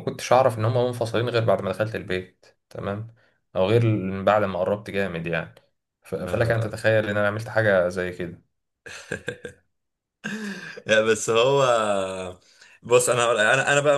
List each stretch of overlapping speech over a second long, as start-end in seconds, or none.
none